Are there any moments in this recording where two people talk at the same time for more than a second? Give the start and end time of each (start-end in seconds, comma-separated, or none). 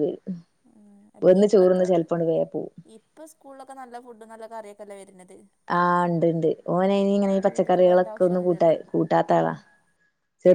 7.1-8.8